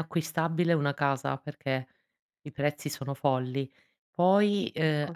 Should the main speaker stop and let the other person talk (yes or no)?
no